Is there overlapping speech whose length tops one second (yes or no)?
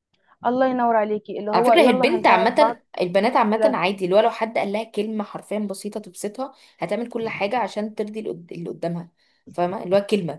yes